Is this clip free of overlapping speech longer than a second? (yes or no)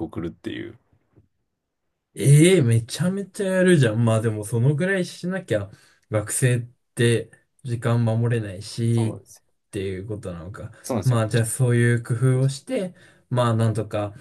yes